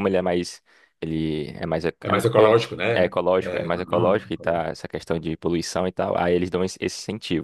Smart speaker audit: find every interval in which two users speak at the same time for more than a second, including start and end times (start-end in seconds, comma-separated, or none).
2.0-4.7